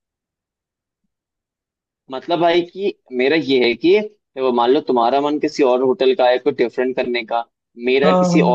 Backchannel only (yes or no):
yes